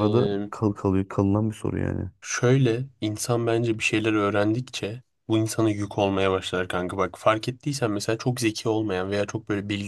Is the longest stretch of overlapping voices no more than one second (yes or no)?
yes